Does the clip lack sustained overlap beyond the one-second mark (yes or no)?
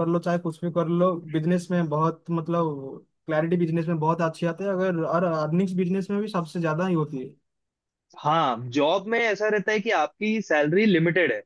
yes